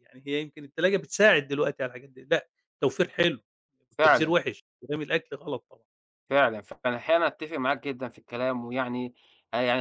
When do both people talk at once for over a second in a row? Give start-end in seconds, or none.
none